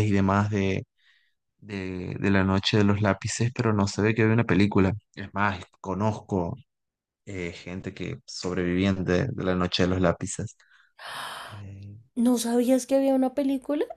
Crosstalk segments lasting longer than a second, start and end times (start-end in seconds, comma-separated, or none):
none